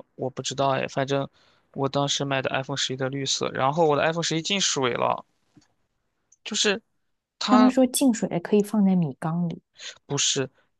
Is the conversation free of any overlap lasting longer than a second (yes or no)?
yes